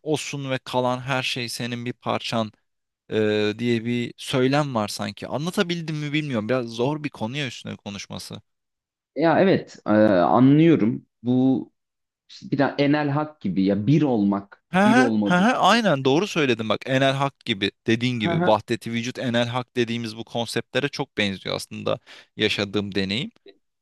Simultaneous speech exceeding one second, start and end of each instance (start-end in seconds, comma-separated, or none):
14.7-16.2